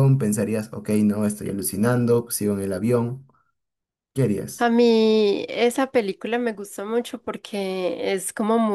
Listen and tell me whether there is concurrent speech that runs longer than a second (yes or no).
no